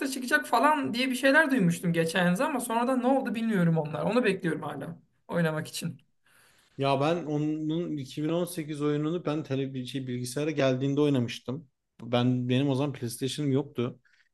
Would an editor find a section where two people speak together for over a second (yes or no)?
no